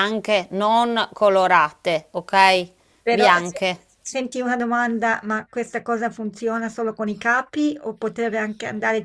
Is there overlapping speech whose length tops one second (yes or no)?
no